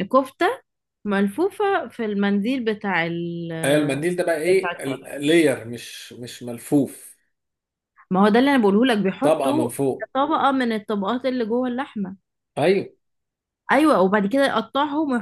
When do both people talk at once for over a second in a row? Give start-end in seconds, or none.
none